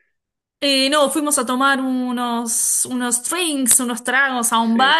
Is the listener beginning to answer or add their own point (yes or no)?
no